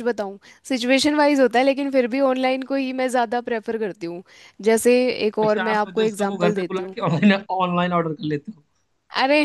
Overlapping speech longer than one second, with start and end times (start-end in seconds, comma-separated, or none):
5.4-7.0